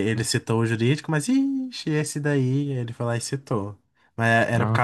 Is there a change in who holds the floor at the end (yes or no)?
no